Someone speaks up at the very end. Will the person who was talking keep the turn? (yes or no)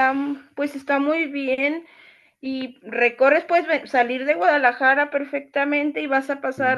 yes